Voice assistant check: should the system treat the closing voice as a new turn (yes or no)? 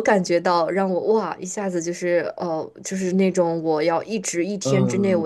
no